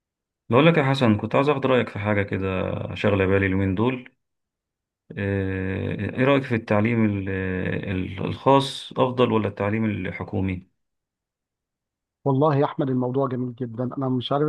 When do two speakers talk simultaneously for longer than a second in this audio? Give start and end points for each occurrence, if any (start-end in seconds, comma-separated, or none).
none